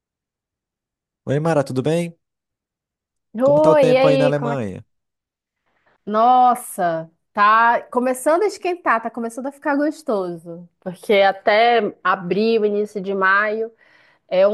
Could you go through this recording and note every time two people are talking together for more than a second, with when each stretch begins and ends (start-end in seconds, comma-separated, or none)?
3.4-4.7